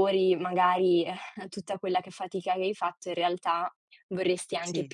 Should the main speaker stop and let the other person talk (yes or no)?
no